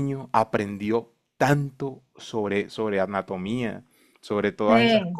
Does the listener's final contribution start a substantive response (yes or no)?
no